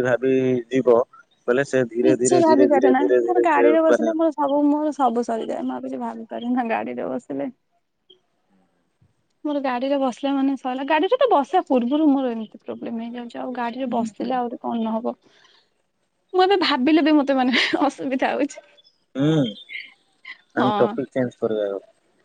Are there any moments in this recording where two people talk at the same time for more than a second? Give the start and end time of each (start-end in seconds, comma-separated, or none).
2.1-4.1